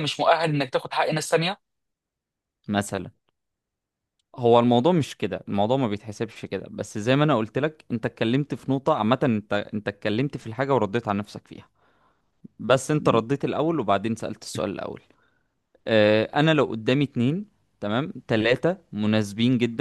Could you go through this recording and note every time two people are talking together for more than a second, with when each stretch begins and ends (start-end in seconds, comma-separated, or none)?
none